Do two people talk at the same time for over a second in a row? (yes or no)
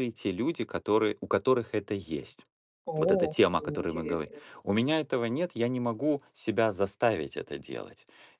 yes